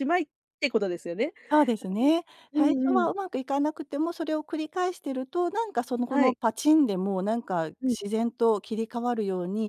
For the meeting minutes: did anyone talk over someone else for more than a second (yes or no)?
no